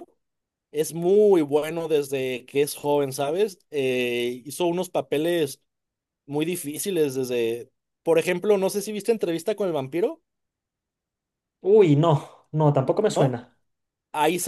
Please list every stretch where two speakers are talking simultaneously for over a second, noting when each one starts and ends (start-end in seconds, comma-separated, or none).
none